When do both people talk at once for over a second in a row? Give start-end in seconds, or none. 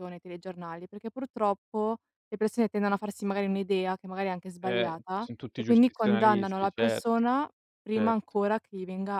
4.6-7.2